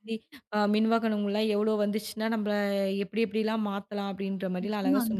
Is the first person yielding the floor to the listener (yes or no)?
yes